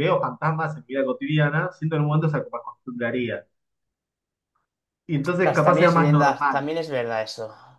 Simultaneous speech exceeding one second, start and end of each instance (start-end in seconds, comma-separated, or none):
5.2-6.6